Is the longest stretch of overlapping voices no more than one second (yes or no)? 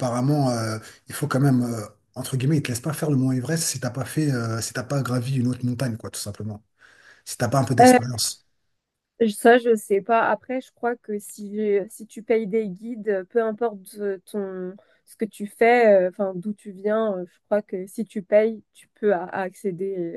yes